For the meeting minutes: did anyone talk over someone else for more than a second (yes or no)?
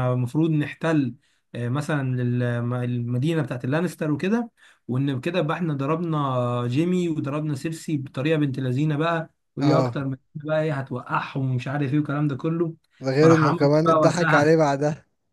yes